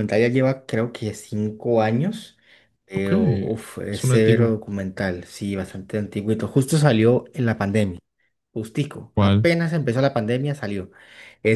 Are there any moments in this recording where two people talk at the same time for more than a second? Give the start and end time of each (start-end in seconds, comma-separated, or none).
2.9-4.5